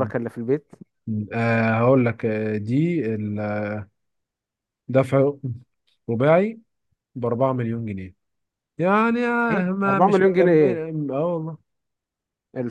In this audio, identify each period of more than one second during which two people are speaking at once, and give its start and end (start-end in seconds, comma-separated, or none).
9.5-10.8